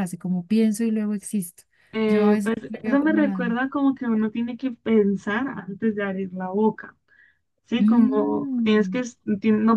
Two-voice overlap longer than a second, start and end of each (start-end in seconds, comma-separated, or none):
2.1-3.5, 7.8-9.0